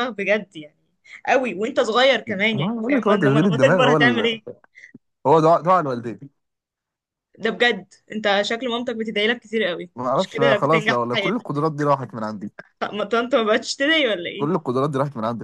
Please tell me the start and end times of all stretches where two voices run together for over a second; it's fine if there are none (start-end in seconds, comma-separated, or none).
2.3-4.3, 10.0-11.5